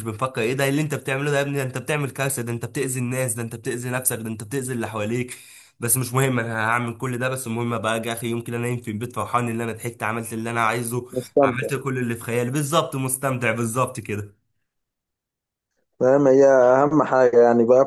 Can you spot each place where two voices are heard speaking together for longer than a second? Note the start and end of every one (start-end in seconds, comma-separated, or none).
none